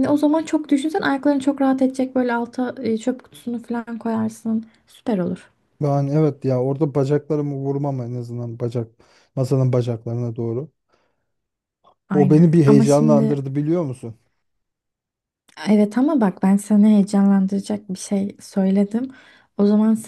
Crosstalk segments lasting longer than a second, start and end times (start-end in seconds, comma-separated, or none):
12.1-13.4